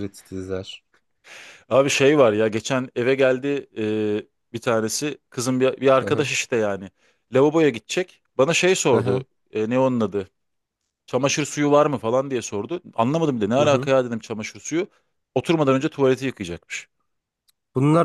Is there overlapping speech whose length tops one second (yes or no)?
no